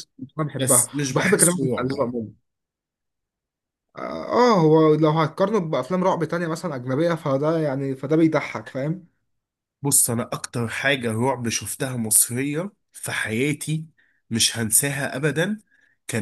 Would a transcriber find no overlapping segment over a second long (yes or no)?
no